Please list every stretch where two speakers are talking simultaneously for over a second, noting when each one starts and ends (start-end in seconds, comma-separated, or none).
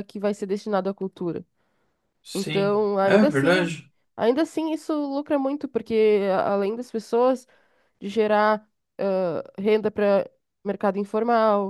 2.3-3.7